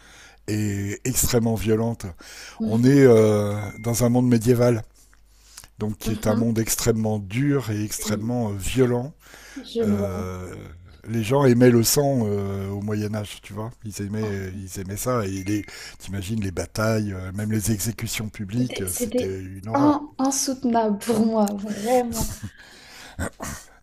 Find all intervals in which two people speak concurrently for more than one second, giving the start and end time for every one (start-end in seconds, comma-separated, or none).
18.5-20.0